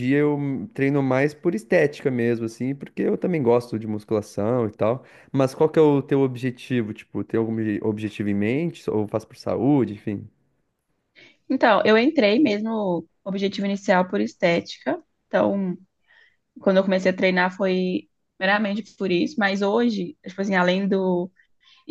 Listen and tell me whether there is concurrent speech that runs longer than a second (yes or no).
no